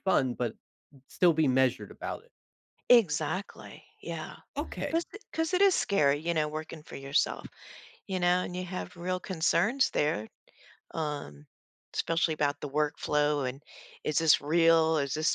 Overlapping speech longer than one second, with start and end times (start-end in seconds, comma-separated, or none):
none